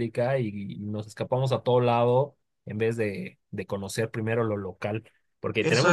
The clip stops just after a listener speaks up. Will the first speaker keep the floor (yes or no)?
no